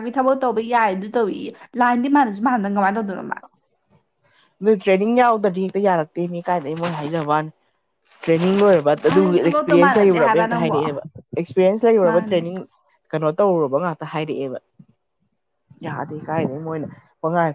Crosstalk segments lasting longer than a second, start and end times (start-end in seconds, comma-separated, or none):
9.1-10.8